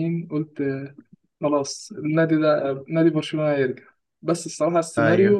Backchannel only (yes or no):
yes